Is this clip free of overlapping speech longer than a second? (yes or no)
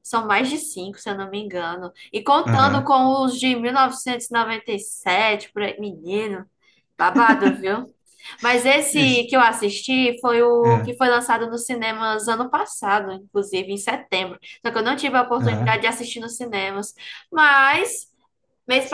yes